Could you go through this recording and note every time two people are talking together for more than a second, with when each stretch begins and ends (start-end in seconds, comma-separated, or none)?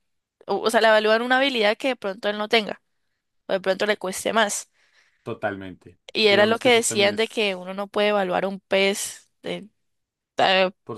6.1-7.7